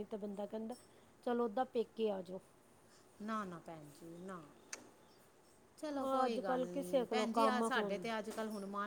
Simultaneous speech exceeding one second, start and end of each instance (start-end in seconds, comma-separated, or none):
6.0-8.1